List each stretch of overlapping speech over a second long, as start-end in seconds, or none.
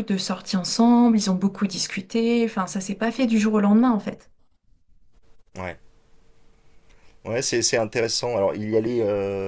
none